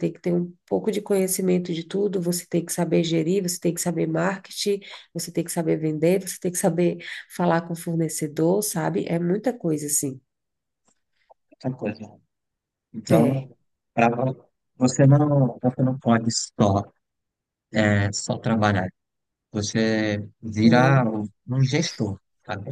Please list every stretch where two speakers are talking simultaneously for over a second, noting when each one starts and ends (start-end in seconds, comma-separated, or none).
none